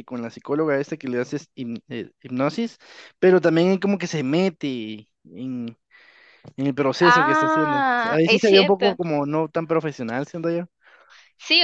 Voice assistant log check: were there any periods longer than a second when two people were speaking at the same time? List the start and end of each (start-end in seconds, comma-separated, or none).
7.0-8.9